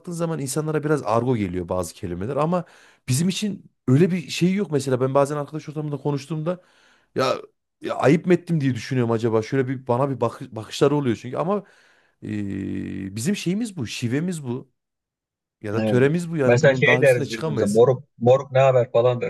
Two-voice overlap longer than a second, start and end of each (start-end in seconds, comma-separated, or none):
15.8-17.8